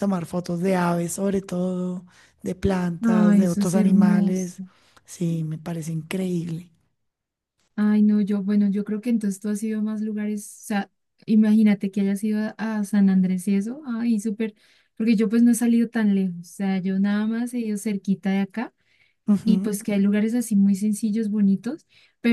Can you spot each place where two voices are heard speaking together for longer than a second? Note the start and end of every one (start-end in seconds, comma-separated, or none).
3.0-4.6